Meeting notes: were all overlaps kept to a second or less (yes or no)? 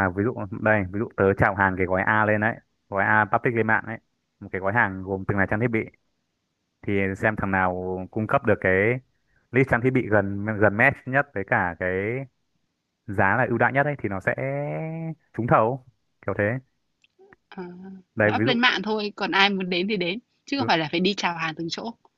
yes